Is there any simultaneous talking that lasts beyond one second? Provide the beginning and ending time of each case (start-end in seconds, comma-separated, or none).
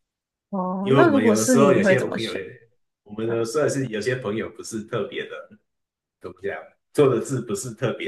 0.8-2.5